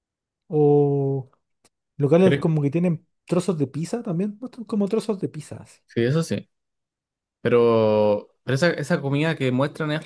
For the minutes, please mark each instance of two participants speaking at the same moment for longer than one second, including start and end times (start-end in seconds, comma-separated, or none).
none